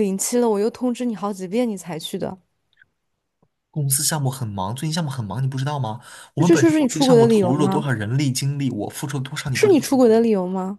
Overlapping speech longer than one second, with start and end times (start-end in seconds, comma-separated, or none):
6.4-7.8